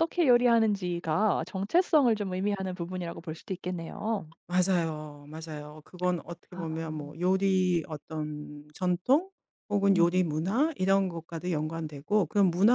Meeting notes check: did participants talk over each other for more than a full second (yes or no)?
no